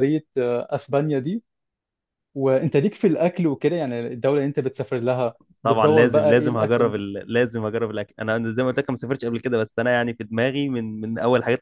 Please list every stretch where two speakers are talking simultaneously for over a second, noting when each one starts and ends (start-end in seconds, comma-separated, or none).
5.6-6.9